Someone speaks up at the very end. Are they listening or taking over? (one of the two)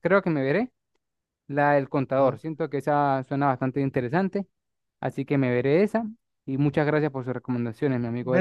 taking over